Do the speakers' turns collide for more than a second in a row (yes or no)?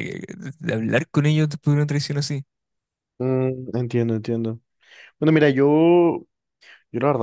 no